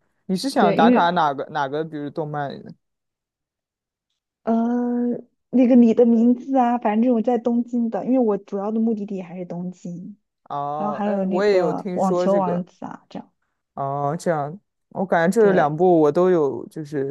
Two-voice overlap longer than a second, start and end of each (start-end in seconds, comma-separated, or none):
10.8-12.6